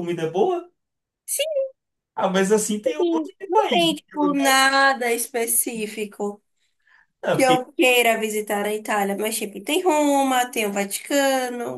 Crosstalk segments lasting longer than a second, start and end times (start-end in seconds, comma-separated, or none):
3.0-4.7